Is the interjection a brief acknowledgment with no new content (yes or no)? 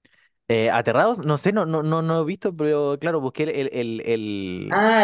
no